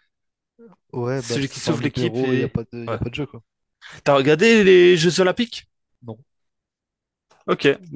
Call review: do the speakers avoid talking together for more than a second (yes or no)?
no